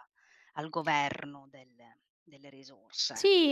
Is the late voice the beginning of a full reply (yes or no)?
yes